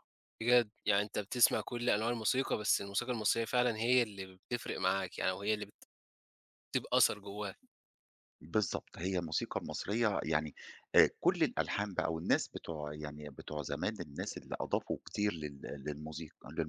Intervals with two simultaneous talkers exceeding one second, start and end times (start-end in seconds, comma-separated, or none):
none